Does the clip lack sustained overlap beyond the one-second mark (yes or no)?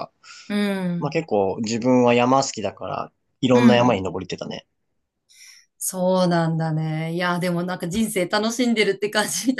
yes